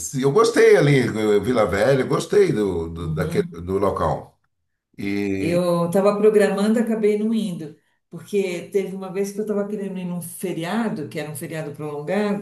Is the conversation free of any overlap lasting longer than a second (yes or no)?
yes